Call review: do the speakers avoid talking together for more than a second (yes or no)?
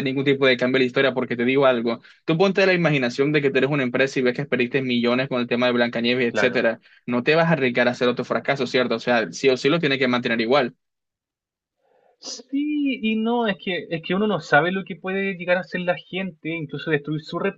yes